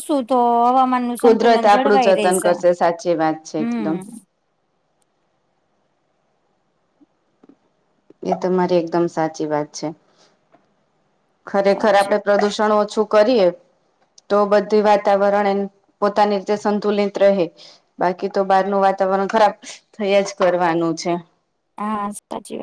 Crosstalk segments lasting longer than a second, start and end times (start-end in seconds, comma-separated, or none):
1.2-2.5